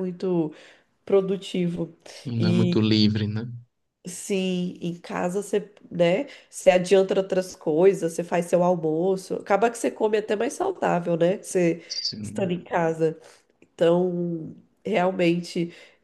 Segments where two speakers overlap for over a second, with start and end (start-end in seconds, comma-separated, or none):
none